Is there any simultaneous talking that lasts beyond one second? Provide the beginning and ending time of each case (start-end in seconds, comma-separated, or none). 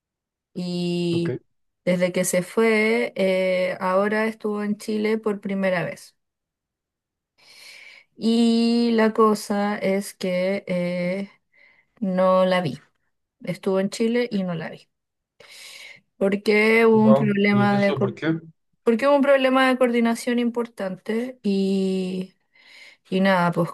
16.9-18.1